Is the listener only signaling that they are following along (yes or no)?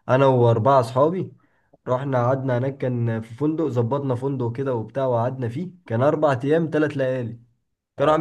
yes